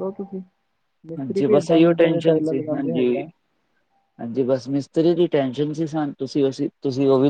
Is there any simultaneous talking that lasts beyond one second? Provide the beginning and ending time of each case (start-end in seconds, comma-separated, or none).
1.2-3.1